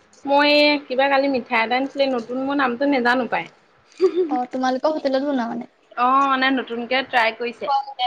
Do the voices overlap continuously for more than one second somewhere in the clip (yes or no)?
no